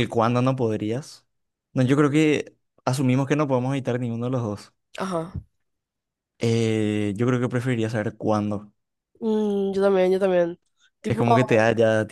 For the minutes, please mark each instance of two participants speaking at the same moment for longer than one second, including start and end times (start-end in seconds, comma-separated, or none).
none